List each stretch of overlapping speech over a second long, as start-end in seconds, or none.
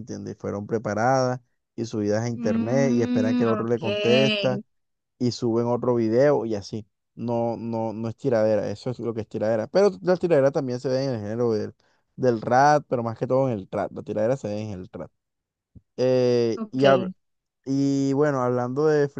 2.4-3.8